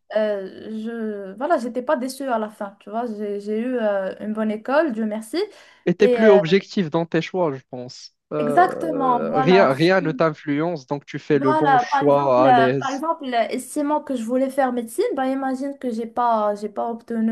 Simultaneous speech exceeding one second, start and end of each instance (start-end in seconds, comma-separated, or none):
8.4-9.7, 11.3-13.1